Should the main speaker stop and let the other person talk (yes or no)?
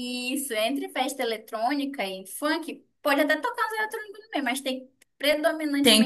yes